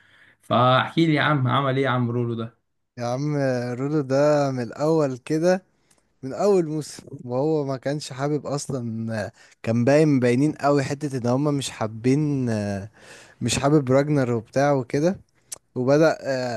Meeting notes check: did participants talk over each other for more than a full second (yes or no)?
no